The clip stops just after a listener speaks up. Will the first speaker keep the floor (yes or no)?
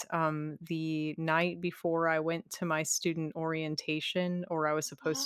yes